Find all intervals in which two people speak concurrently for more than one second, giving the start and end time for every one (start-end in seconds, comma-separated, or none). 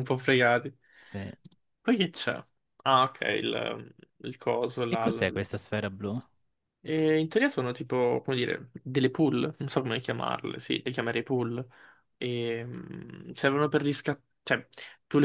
none